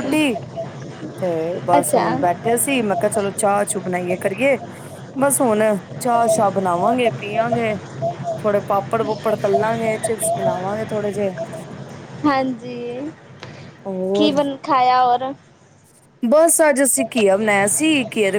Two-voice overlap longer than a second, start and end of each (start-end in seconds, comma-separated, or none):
none